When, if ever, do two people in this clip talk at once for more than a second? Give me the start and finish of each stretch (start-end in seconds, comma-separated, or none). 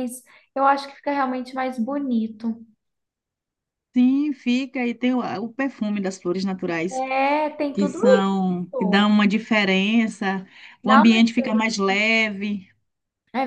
7.7-9.1